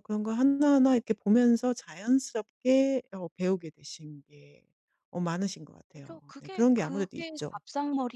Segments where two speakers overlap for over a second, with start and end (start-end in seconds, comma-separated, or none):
5.9-7.6